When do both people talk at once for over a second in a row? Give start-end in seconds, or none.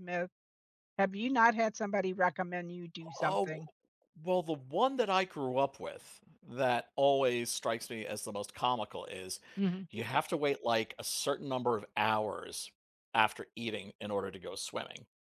none